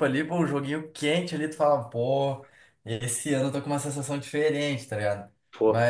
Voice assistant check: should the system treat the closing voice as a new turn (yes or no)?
no